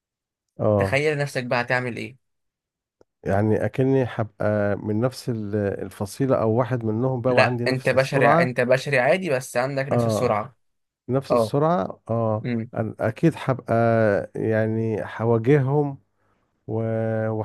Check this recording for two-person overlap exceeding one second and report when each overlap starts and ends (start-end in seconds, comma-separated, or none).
7.3-8.5